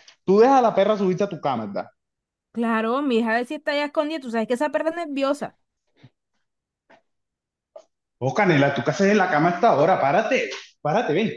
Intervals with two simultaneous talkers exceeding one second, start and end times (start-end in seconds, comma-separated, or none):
none